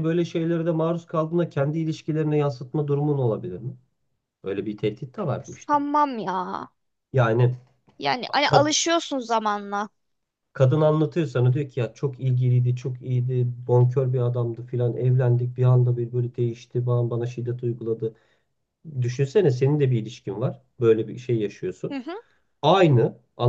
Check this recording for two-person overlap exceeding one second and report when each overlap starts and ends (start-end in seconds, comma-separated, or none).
none